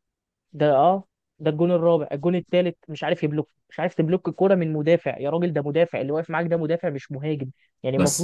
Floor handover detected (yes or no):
no